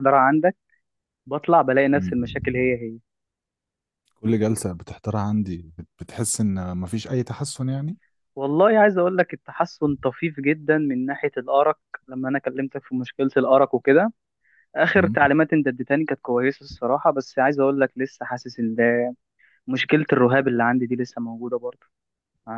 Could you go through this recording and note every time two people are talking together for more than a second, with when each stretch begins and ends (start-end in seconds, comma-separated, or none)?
none